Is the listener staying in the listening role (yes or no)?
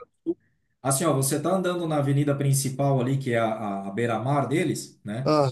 yes